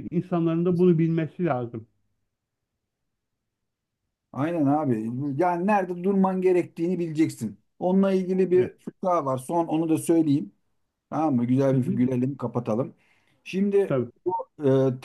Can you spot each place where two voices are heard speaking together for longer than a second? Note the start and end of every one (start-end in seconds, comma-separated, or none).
none